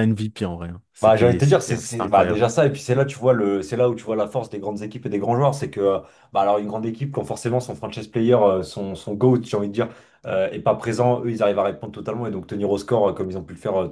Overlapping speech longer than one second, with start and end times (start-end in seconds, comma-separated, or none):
1.0-2.4